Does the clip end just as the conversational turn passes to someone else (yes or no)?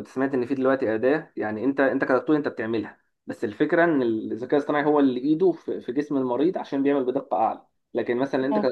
no